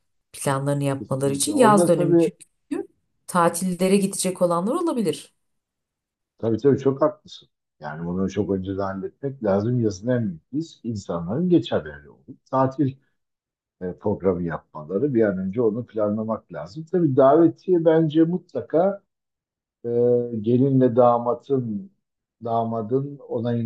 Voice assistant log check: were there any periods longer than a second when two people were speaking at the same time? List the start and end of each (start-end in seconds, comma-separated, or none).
1.0-2.3